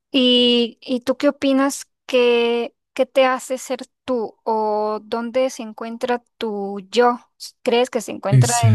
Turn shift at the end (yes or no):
no